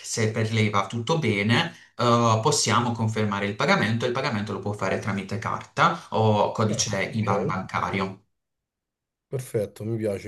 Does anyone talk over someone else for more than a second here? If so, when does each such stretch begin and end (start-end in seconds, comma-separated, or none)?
none